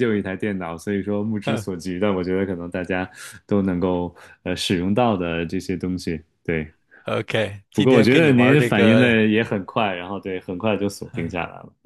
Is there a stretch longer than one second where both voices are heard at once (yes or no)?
yes